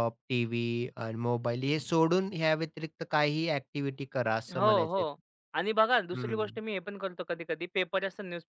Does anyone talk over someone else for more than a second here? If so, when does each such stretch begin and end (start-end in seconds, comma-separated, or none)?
none